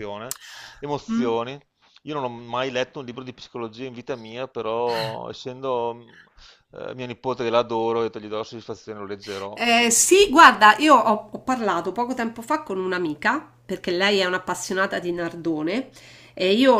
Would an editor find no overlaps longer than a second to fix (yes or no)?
yes